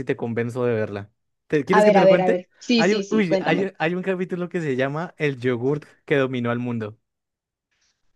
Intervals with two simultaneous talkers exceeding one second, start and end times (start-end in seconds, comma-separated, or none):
1.8-3.7